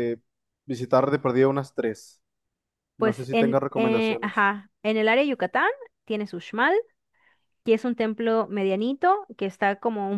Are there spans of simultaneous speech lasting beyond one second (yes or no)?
yes